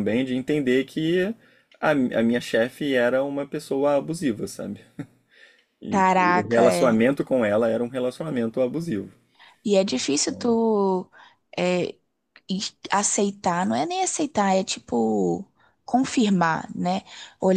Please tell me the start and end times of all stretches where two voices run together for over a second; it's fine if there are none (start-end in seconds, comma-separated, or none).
5.9-7.1